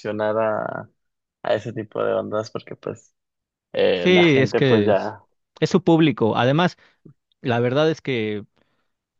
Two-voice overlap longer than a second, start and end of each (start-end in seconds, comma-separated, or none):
3.9-5.2